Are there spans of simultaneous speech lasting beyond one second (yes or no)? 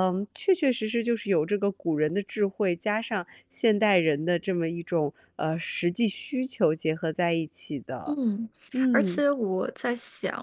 no